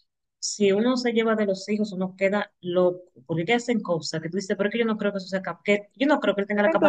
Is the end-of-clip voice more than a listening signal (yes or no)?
yes